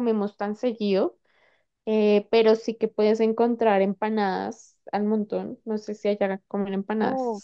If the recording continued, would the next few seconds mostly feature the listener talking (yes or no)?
yes